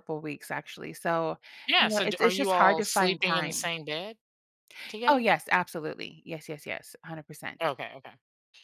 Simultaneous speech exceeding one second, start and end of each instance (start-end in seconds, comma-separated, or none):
1.8-3.7